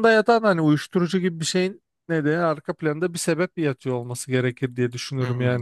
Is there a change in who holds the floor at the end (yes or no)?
yes